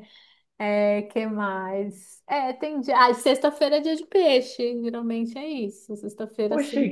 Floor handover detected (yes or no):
yes